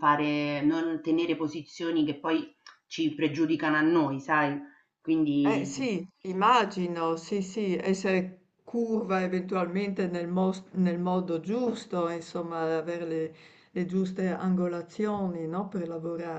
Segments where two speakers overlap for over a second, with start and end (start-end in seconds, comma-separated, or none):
none